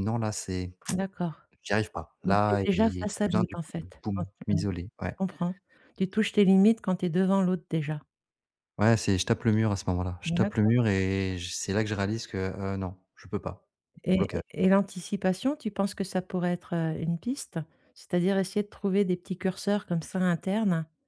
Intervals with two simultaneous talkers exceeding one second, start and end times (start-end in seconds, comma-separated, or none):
2.2-4.7